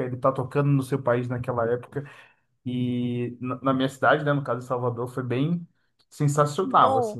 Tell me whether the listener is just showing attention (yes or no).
no